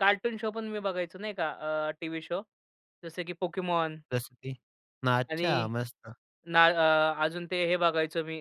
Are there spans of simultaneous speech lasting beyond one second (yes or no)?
no